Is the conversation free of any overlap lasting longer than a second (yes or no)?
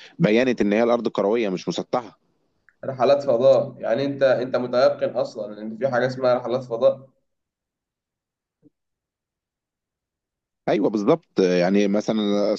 yes